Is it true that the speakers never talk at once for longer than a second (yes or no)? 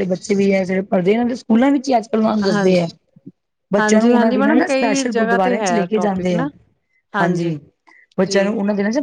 no